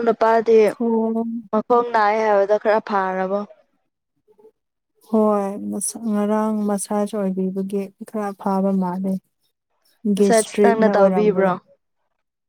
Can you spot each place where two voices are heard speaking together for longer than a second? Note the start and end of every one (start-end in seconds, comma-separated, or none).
10.2-11.5